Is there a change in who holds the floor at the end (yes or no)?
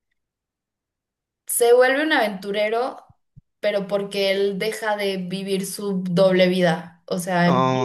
no